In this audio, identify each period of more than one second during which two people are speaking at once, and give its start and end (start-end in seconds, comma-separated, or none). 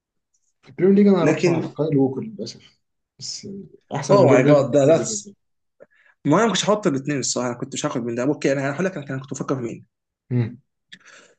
4.1-5.3